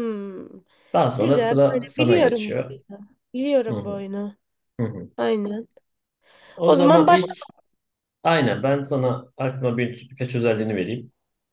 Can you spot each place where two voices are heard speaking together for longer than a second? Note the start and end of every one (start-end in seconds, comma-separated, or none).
1.1-2.8